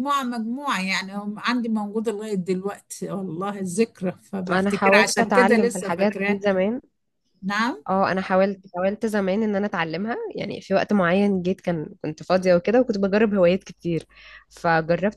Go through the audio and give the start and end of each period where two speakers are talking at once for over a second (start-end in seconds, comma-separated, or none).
4.5-6.4